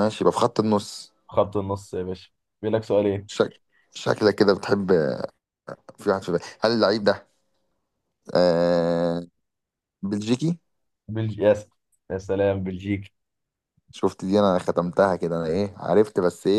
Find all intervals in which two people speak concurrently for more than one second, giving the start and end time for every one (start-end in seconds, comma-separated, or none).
none